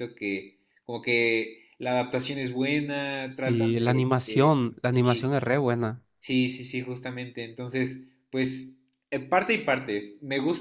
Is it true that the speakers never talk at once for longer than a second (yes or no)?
no